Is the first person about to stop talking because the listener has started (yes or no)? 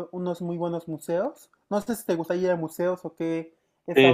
yes